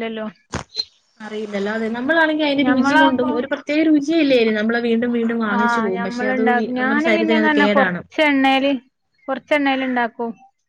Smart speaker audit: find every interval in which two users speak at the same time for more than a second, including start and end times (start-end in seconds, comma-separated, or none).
6.1-8.0